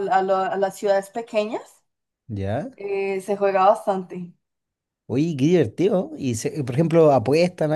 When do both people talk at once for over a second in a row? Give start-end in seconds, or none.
none